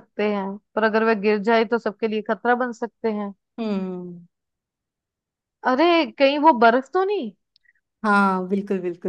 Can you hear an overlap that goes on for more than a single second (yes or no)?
no